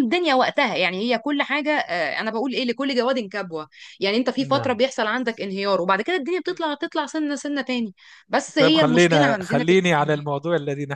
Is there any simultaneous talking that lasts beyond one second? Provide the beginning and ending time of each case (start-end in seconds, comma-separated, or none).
8.6-10.2